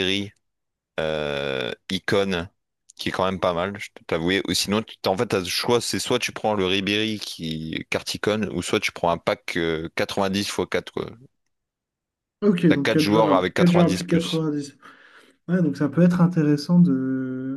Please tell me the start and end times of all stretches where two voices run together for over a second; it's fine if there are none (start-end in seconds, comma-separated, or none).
12.7-14.4